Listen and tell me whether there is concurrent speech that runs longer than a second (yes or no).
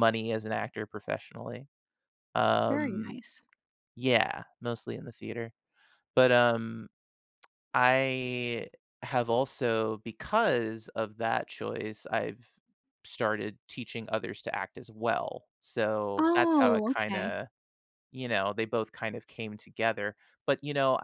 yes